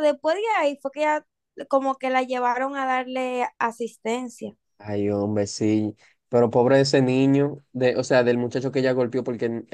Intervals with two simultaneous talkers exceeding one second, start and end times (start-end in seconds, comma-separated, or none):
none